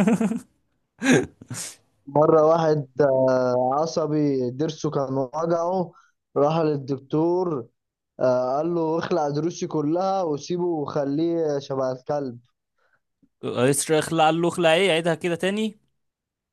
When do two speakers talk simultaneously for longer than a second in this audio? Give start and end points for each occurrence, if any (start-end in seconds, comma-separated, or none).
none